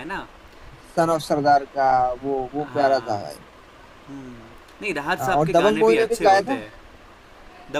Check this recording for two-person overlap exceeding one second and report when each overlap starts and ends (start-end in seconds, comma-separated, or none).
5.2-6.6